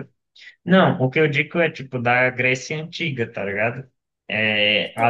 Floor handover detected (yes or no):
yes